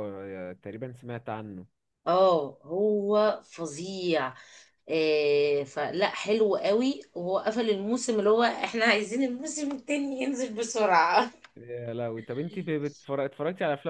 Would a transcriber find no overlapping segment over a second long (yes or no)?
yes